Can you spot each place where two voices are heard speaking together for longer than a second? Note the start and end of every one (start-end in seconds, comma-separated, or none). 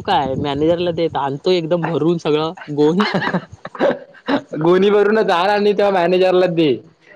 none